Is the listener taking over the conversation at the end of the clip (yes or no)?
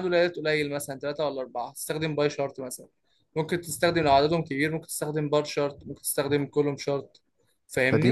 yes